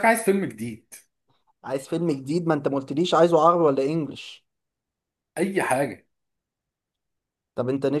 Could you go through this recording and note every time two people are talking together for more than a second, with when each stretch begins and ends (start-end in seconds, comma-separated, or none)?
none